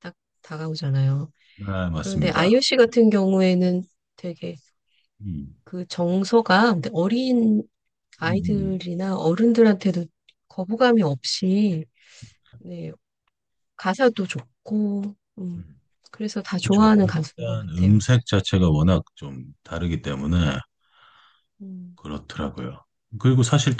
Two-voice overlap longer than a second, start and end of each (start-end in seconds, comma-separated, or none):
16.6-18.1